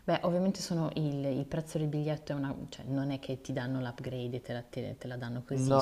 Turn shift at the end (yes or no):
yes